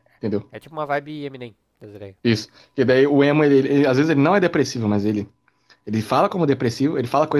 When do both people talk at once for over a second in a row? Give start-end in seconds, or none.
none